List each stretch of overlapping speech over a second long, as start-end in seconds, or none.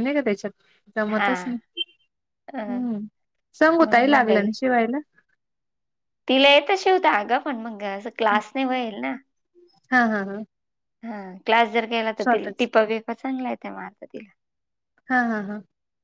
none